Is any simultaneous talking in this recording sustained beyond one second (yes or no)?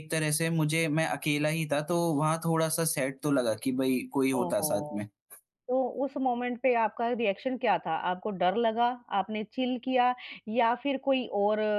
no